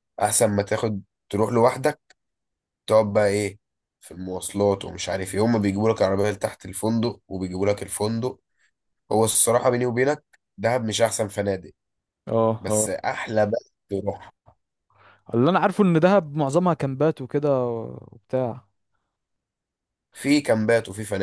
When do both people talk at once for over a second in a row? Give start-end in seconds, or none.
none